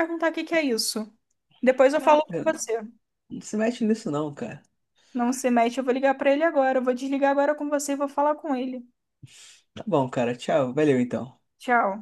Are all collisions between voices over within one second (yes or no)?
yes